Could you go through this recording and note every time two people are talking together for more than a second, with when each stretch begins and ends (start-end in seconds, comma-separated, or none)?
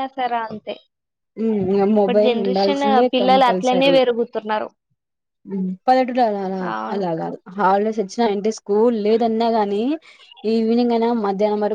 2.0-4.0